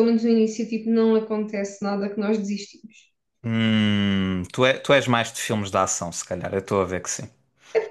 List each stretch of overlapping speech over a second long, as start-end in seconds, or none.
none